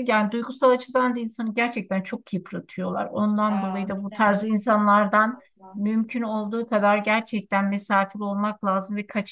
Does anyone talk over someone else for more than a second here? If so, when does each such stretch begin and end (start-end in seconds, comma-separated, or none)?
3.5-5.4